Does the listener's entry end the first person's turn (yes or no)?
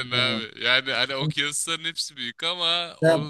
no